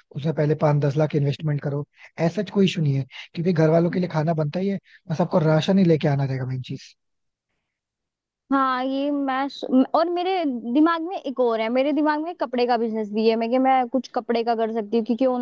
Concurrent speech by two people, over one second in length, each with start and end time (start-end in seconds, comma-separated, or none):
none